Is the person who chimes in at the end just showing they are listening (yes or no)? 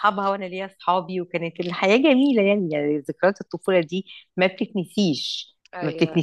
yes